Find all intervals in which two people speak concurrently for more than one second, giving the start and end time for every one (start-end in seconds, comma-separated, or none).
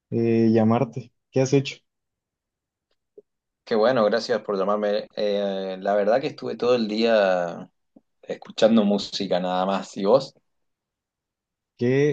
none